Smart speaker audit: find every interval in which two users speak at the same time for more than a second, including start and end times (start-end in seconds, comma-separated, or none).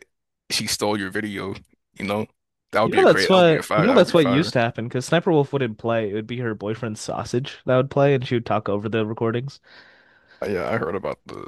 2.9-4.5